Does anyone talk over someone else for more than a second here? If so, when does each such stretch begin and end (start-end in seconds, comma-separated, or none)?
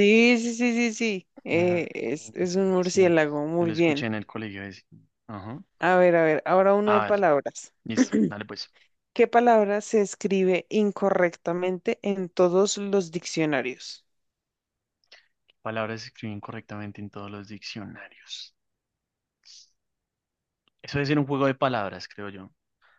2.8-4.1